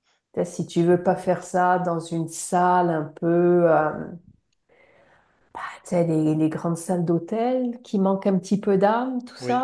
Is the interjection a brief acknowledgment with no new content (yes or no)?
yes